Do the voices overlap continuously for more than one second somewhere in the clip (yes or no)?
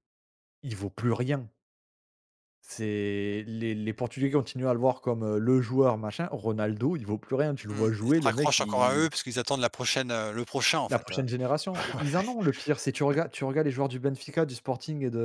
yes